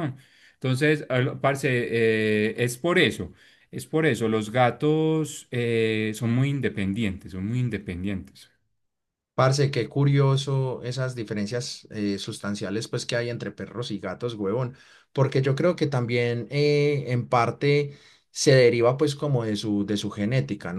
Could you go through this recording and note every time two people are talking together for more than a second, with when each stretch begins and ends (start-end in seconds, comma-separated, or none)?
none